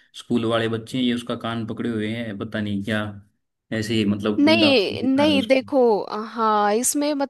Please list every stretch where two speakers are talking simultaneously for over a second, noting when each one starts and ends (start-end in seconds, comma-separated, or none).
4.4-5.7